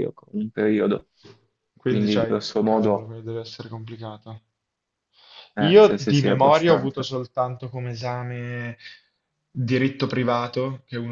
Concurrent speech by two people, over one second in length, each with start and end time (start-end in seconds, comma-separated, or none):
1.8-3.1, 5.6-7.1